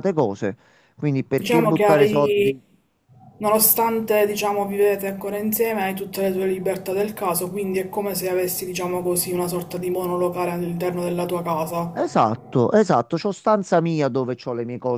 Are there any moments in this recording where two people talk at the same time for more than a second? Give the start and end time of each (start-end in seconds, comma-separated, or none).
1.3-2.6